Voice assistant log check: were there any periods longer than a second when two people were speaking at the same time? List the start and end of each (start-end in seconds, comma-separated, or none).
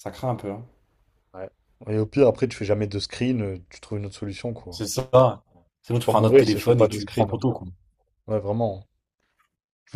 5.9-7.4